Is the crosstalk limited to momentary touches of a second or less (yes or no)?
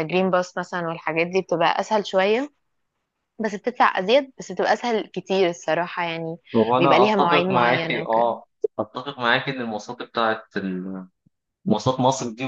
no